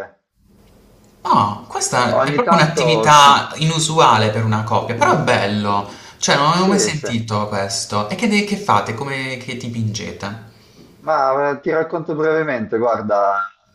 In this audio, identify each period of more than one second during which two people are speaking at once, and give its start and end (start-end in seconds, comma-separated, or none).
2.1-3.3